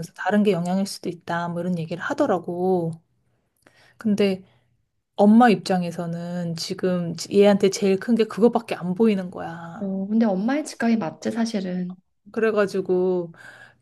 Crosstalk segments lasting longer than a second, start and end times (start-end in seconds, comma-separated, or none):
none